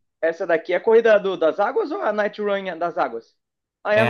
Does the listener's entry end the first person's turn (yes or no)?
yes